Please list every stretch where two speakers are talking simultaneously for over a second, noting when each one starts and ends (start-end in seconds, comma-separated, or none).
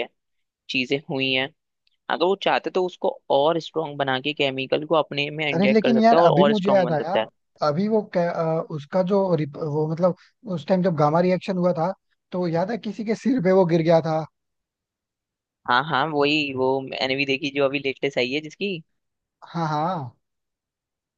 5.5-7.2